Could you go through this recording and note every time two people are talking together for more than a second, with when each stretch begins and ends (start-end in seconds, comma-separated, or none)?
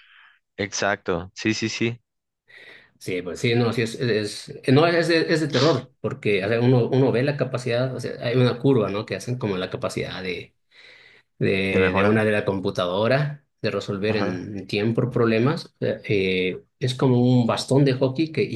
none